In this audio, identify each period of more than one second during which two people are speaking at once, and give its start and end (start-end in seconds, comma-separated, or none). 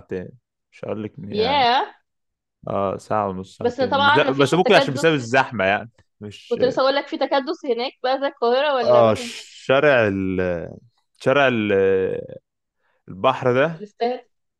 3.6-5.3